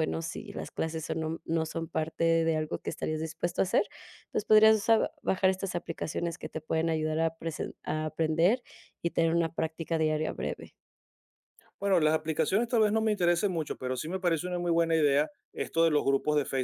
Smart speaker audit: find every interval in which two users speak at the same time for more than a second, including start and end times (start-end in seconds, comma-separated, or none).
none